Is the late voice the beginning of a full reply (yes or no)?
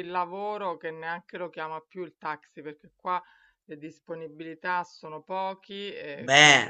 no